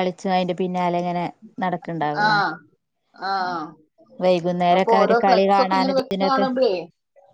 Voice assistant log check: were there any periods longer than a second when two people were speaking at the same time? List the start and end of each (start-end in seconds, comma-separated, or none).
4.8-6.5